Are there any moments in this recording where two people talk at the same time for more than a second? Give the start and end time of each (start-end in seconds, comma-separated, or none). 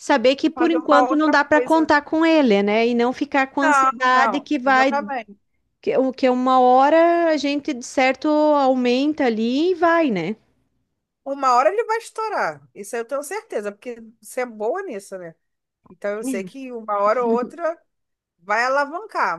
0.5-1.9, 3.6-4.9